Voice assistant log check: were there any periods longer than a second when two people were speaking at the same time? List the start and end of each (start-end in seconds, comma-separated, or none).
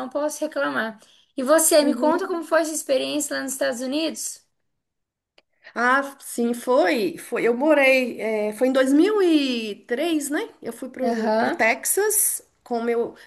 none